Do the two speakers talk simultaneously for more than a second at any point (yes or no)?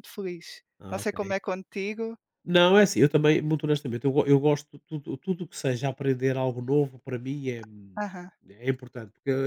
no